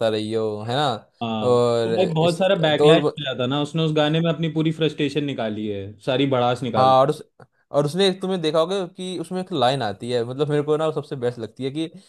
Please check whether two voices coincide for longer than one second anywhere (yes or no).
yes